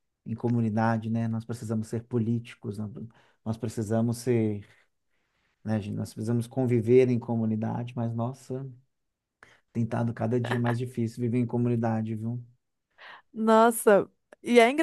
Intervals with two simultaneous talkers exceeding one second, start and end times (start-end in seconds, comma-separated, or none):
none